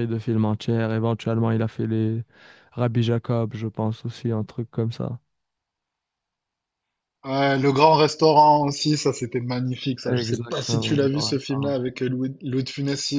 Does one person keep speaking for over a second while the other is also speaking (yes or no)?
yes